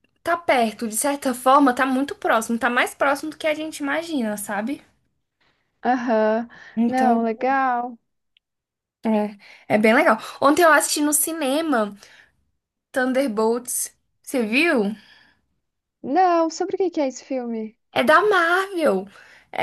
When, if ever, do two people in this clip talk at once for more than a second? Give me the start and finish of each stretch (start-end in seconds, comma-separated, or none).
none